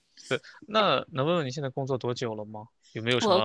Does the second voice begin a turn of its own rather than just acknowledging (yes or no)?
no